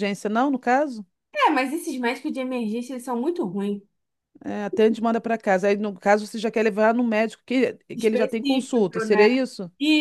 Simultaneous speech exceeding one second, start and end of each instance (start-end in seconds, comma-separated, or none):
8.0-9.3